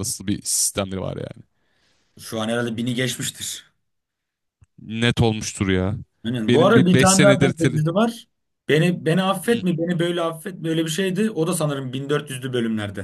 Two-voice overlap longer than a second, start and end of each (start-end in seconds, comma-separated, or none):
6.4-7.8